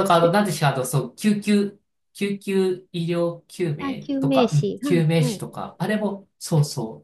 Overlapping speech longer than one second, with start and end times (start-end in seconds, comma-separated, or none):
3.8-5.5